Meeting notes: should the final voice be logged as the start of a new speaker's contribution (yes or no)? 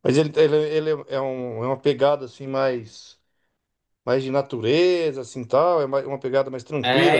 yes